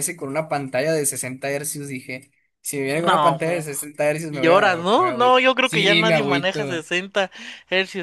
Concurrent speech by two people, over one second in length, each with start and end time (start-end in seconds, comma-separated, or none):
4.3-6.8